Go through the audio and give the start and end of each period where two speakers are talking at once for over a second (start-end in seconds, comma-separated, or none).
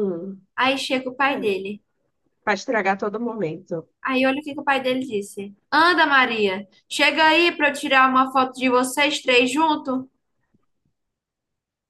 none